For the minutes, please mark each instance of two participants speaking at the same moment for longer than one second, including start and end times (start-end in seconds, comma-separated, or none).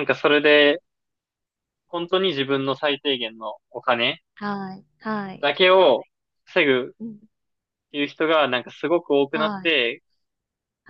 none